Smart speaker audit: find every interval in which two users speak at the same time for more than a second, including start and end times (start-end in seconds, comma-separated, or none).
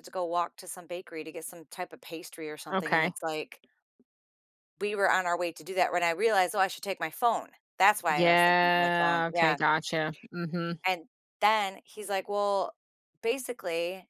8.1-9.6